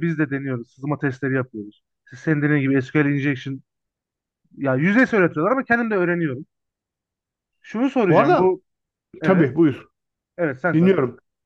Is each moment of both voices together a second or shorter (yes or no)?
yes